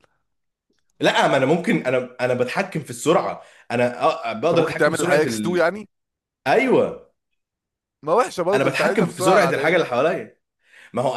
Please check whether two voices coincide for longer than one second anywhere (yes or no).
yes